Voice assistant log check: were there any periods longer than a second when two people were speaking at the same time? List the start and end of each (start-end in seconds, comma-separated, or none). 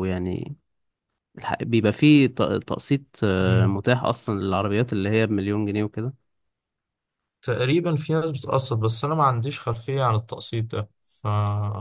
none